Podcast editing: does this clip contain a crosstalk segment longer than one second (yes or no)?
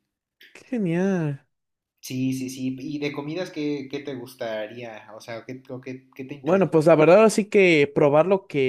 no